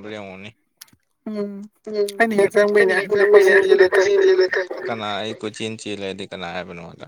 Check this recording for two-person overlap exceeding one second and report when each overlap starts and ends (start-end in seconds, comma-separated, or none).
2.8-4.4